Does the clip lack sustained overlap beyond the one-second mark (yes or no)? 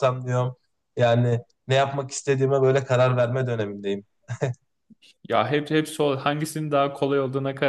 yes